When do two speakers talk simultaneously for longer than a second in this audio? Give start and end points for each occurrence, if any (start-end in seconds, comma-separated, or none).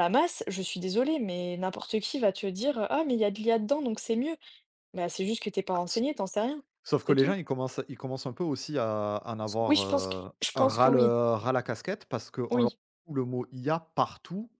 9.7-11.1